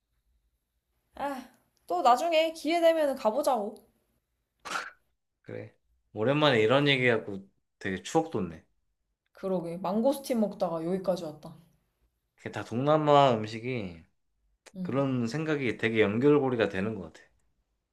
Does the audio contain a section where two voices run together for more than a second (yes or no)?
no